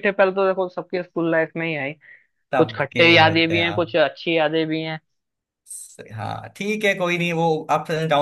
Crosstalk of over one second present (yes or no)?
yes